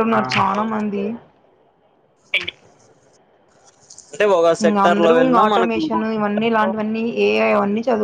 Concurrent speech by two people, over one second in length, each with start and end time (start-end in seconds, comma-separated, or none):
4.6-6.7